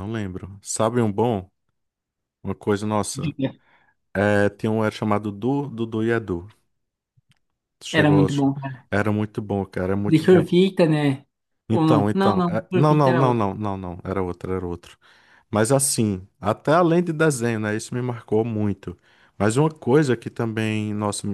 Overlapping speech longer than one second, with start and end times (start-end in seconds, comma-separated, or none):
11.7-13.4